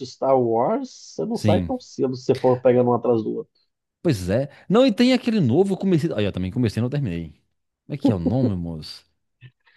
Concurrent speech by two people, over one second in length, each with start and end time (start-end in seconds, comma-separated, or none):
none